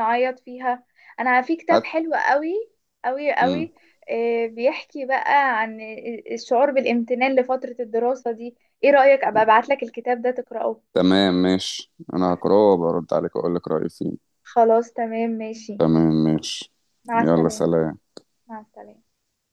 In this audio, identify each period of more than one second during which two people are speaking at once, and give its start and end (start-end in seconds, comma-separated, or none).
none